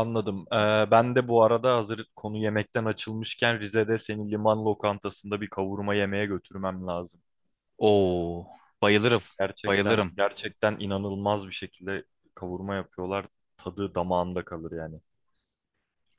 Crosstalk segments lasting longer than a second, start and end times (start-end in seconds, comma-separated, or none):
none